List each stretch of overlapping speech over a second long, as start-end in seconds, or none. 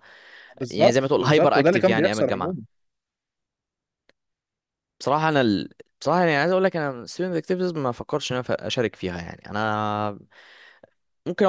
0.7-2.6